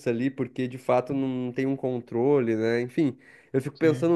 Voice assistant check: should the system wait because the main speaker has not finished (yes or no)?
yes